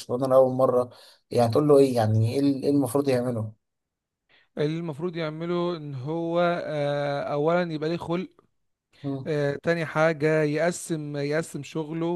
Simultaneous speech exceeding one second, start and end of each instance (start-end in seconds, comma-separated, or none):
none